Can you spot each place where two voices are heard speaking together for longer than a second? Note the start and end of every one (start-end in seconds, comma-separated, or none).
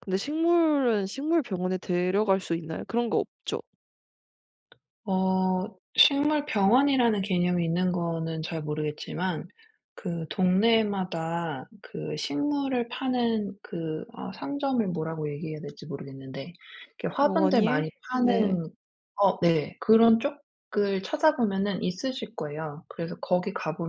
17.2-18.6